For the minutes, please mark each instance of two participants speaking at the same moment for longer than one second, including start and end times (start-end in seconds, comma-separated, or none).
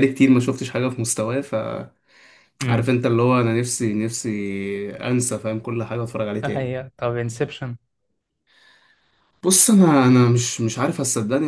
none